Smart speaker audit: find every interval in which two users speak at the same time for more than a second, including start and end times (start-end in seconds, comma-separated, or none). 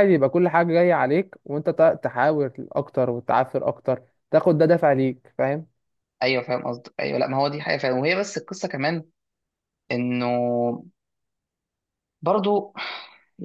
none